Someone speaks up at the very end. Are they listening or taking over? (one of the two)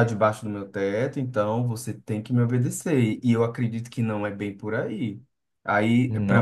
listening